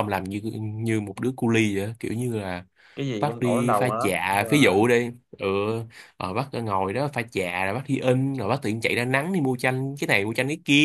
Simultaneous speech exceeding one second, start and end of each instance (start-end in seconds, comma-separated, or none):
3.2-4.8